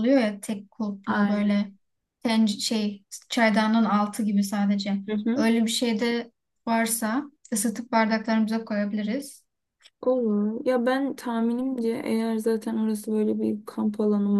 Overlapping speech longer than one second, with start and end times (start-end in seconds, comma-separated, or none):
none